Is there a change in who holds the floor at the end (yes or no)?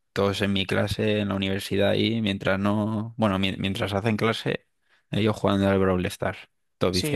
yes